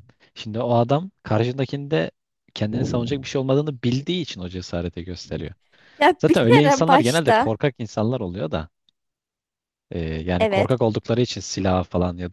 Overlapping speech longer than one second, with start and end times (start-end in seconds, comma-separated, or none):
6.2-7.5